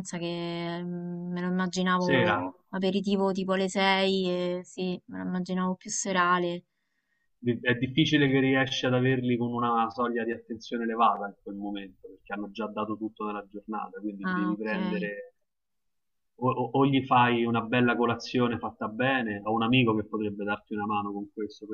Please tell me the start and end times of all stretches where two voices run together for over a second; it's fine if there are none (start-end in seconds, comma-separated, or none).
none